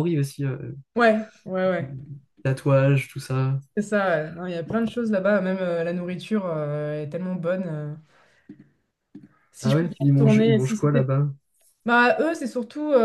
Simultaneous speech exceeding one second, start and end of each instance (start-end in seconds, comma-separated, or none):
9.6-11.1